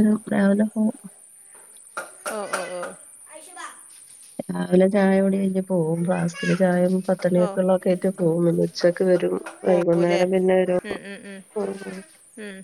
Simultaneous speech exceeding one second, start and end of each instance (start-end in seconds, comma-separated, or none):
none